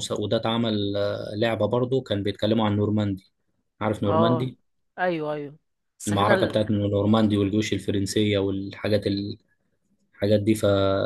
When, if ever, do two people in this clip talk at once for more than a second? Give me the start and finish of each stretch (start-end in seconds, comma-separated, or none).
none